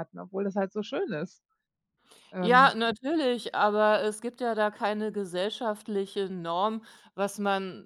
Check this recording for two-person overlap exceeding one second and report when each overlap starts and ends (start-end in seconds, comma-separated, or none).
none